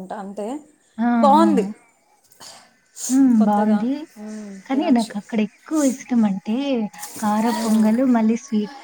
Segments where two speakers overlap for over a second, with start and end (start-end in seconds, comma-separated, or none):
none